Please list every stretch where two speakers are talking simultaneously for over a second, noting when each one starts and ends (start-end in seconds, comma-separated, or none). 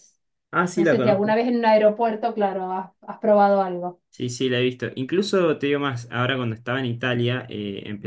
none